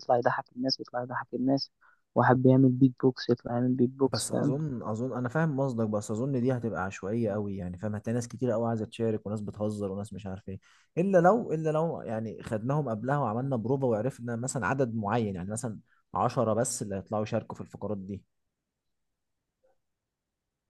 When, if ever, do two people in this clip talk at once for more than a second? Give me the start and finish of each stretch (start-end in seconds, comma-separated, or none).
none